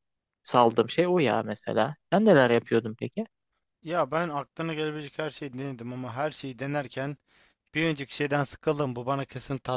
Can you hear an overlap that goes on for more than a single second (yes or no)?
no